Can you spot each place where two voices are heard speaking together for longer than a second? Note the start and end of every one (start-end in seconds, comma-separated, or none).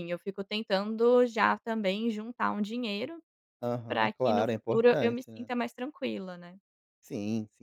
3.9-5.5